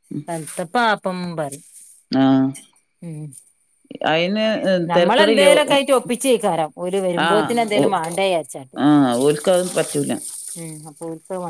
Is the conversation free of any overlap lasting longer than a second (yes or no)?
yes